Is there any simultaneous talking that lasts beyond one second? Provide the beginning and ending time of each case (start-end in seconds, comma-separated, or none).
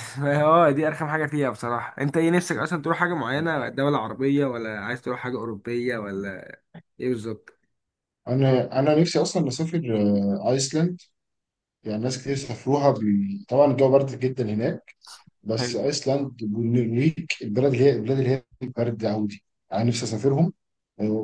none